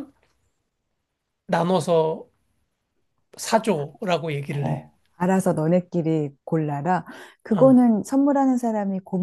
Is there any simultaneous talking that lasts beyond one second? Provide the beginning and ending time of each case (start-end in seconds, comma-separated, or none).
none